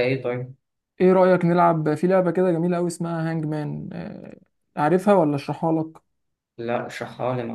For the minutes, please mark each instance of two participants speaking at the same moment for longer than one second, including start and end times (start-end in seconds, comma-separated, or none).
none